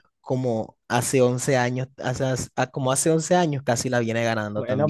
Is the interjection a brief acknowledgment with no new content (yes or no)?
no